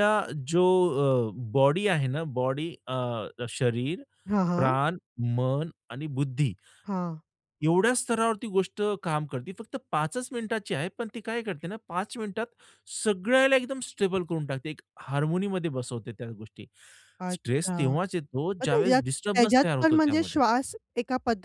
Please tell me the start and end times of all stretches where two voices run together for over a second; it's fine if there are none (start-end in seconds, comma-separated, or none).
18.6-20.4